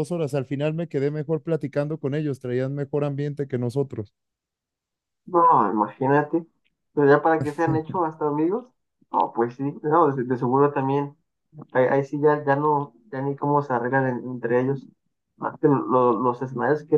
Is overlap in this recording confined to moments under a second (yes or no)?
yes